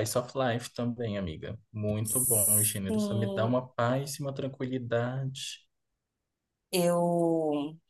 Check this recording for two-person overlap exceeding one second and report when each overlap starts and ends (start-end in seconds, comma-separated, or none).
2.1-3.6